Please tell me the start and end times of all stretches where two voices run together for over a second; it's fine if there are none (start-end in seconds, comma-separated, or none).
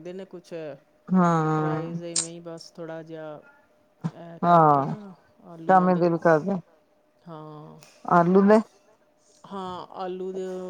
none